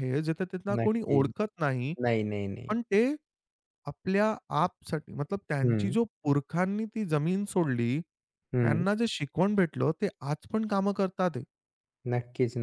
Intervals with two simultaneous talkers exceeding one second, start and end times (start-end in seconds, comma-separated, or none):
none